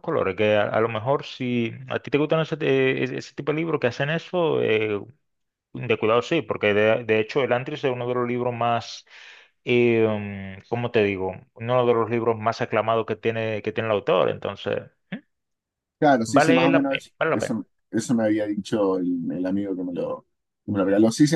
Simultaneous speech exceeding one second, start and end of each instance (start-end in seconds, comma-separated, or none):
16.3-17.6